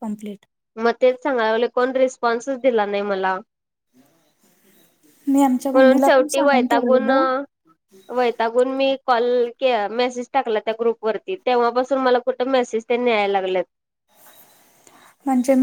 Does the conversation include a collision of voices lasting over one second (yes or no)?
yes